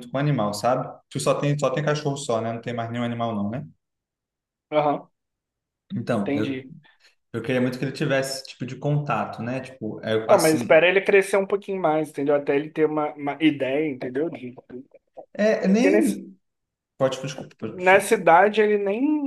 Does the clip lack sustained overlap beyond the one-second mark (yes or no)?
yes